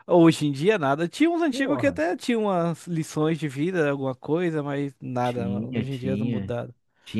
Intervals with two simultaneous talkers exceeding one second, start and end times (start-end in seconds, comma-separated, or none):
5.2-6.6